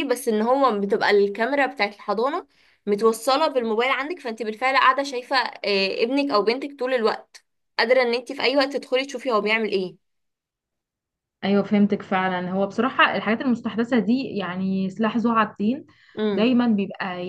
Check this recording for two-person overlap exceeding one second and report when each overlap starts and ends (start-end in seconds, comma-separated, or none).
none